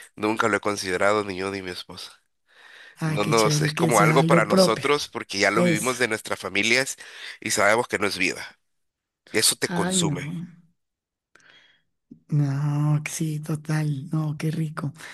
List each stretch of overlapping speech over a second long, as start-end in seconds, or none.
3.0-4.8